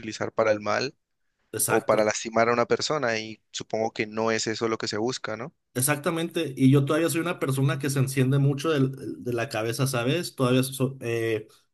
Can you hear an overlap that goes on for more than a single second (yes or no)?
no